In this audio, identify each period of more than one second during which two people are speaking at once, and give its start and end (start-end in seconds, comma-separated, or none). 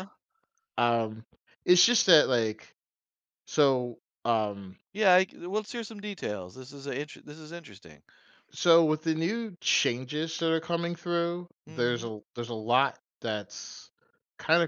none